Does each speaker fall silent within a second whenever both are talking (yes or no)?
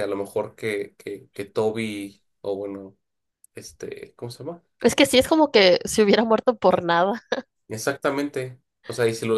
yes